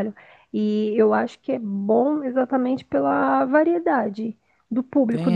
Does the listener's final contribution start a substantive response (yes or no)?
no